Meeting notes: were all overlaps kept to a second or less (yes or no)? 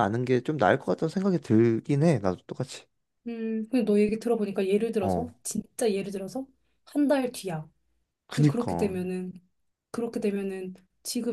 yes